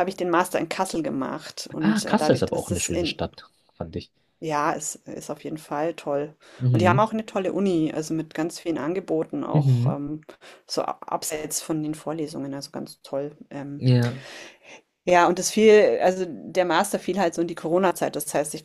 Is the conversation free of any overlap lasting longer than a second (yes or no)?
no